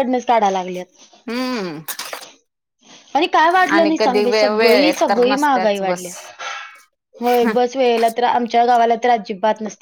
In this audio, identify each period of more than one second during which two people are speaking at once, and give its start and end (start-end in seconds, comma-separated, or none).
3.8-6.0